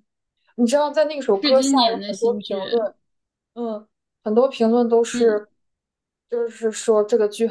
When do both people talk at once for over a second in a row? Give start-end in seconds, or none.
1.3-2.9